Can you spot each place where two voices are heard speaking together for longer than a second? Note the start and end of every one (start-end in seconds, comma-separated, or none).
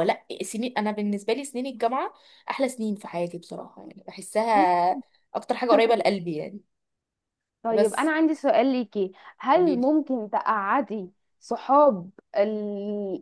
none